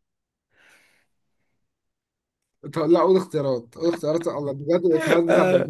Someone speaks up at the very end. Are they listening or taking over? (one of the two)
taking over